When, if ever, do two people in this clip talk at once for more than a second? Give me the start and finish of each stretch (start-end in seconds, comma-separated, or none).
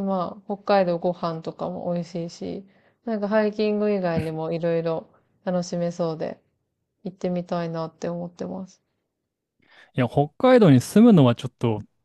none